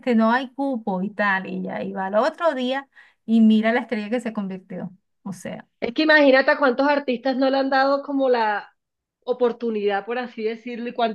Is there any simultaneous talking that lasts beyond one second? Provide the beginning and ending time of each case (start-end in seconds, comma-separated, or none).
none